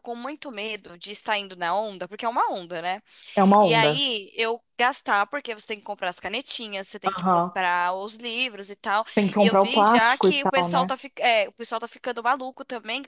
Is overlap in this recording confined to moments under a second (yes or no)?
no